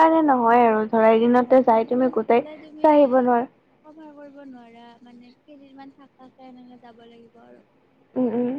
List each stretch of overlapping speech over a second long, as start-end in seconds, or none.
1.4-3.1